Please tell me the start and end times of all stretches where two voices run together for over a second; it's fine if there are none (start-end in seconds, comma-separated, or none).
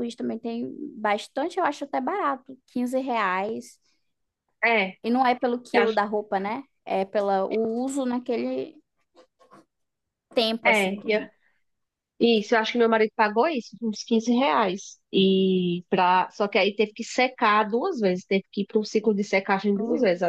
none